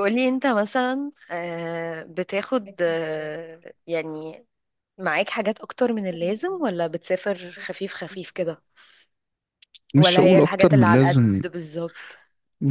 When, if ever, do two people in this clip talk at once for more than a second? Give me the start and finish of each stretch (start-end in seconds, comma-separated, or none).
10.0-11.4